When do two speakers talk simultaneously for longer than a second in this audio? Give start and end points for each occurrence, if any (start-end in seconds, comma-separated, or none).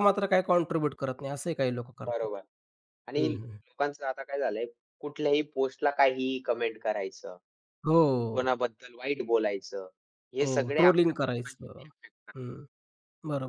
10.4-11.9